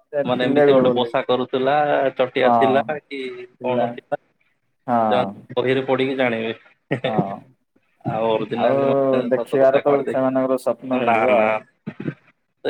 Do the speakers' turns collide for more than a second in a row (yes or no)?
yes